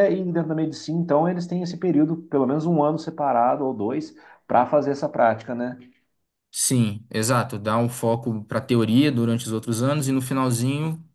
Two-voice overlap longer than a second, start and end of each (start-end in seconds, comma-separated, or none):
none